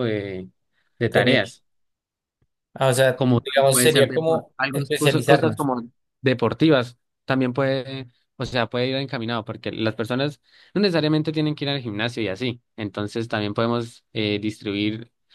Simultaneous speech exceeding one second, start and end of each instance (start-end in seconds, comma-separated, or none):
3.1-5.7